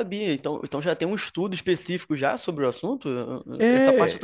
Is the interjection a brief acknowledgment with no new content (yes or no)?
no